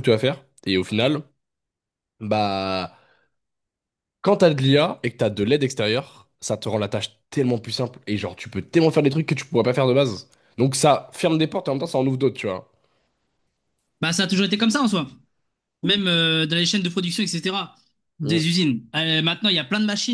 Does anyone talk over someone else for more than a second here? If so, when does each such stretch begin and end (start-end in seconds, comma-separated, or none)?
none